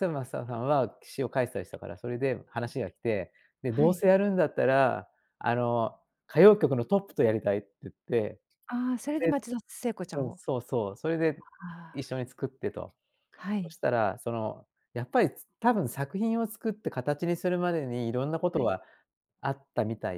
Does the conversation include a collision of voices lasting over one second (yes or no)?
no